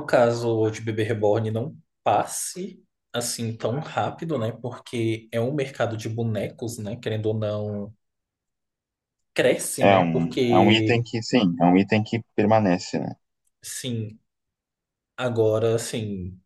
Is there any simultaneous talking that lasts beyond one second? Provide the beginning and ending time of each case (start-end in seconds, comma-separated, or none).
9.8-11.0